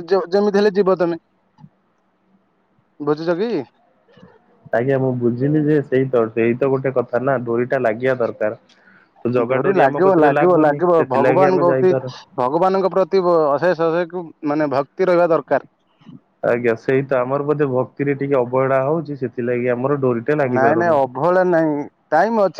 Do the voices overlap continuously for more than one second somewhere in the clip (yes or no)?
yes